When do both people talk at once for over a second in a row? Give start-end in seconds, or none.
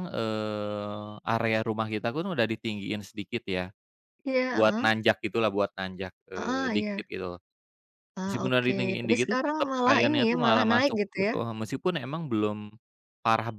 8.2-11.3